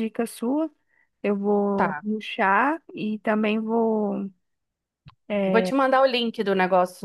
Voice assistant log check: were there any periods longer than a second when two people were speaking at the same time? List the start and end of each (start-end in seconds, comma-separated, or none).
none